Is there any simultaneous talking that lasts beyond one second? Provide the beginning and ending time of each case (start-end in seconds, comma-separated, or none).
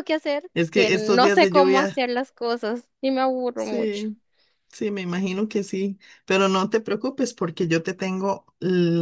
0.5-2.0